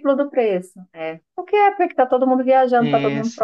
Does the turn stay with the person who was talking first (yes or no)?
no